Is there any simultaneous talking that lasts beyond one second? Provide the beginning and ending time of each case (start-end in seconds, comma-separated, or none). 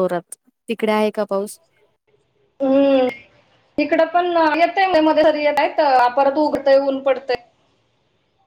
none